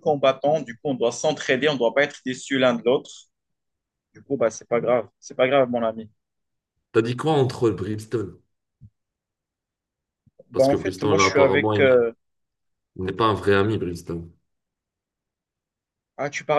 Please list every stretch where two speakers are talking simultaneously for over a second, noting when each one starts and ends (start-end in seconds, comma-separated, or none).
10.5-12.0